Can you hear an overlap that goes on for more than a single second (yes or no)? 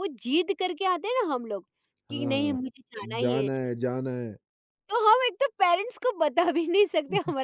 no